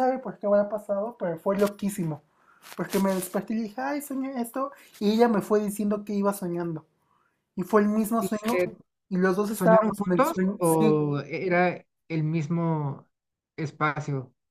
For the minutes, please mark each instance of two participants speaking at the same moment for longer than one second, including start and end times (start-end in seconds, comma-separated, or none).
9.5-11.0